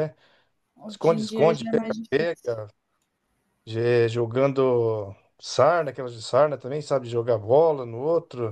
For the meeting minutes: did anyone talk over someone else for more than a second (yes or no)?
yes